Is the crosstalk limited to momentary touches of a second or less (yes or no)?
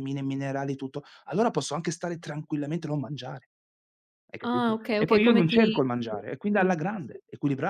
no